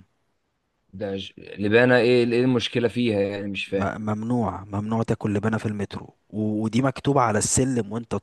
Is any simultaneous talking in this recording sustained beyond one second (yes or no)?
no